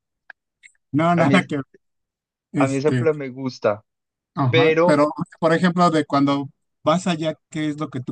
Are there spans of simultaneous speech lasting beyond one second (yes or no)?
no